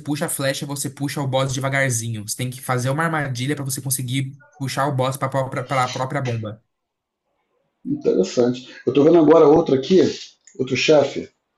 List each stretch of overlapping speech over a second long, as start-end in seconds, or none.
none